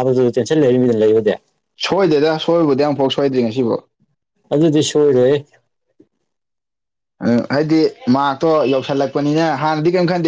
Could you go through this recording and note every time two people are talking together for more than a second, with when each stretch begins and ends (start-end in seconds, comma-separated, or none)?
none